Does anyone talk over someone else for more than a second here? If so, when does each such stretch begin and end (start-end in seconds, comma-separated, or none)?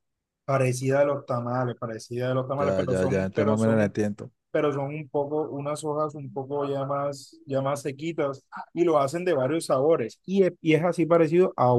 2.6-4.0